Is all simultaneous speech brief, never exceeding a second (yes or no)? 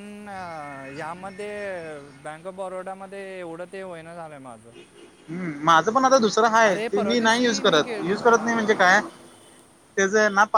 no